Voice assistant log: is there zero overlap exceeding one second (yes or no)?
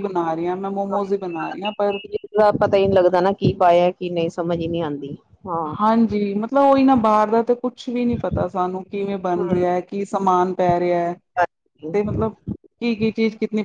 yes